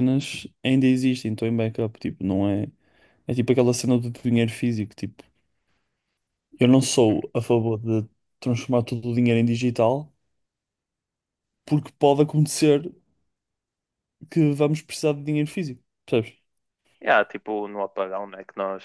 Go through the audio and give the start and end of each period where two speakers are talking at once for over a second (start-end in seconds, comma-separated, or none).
none